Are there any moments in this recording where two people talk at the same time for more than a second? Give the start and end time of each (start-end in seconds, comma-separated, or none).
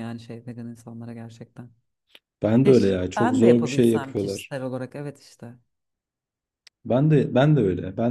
2.6-4.5